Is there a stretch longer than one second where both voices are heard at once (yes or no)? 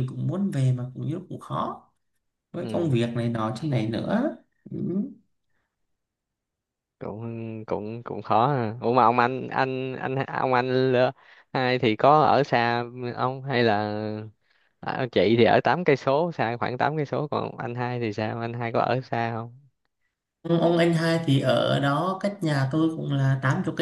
no